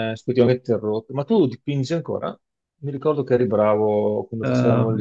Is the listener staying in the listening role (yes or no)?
no